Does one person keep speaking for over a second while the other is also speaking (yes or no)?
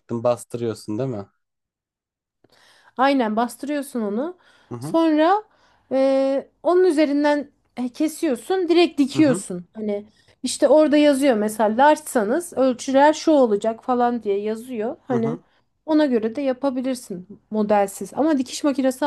no